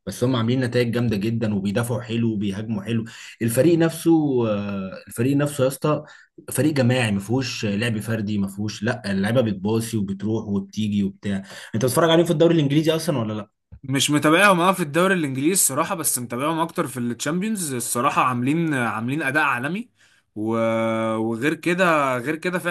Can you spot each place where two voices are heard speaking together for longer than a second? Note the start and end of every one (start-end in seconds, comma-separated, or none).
none